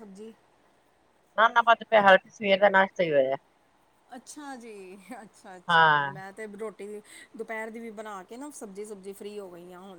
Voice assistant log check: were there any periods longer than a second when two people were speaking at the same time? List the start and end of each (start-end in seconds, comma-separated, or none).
none